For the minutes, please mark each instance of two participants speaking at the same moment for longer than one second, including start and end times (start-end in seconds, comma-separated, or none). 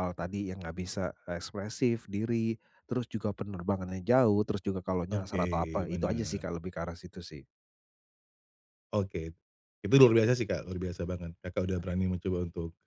5.1-6.4